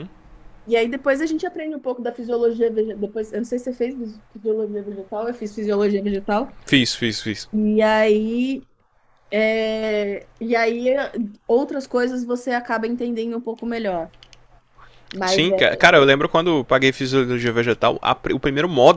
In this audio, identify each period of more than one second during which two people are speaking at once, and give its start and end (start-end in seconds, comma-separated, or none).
none